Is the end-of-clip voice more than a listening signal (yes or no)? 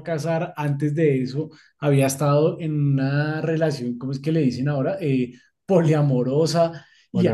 no